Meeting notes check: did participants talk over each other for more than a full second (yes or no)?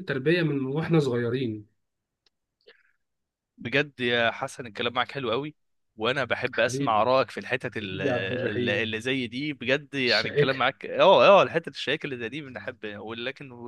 yes